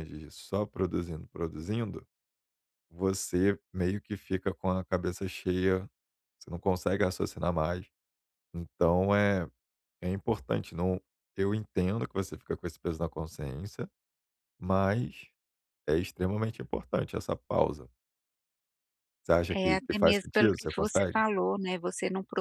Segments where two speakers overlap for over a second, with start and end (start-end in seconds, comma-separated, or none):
19.5-21.2